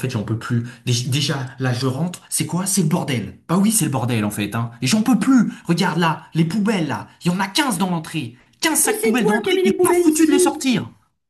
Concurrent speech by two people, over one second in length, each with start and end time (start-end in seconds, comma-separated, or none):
8.8-10.7